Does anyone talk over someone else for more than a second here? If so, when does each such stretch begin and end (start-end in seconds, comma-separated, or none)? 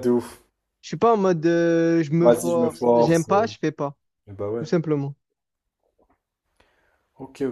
2.2-3.5